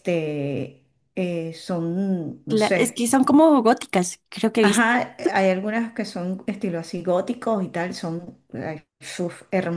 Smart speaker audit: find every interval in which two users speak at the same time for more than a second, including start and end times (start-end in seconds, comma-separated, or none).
none